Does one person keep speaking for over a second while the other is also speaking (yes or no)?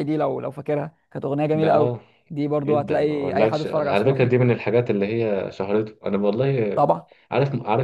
yes